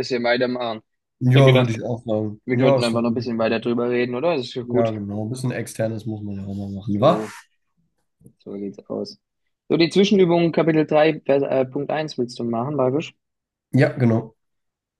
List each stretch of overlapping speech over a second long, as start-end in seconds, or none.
2.5-3.8